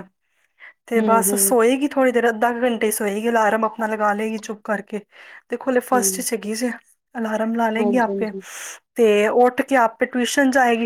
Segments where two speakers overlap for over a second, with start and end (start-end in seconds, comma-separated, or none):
none